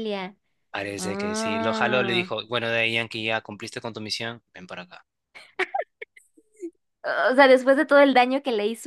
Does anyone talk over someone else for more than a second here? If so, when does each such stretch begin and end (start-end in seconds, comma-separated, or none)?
1.0-2.3